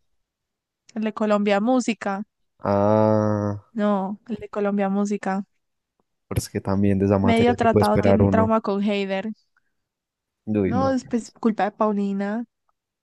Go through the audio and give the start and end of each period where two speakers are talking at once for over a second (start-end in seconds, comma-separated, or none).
7.2-8.5